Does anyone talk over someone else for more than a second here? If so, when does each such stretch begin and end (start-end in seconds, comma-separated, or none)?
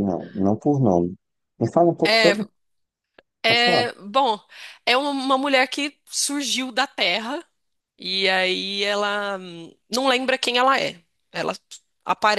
none